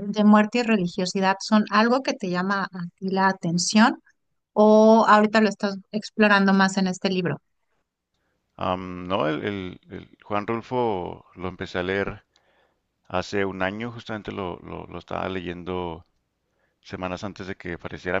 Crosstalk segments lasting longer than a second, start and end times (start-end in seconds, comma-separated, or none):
none